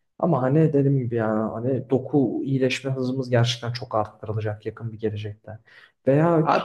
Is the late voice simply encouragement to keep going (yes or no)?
yes